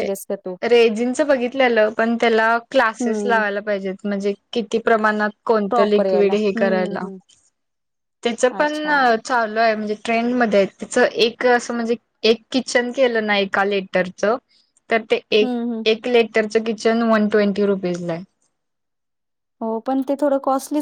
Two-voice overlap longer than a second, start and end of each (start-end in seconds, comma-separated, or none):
5.7-7.0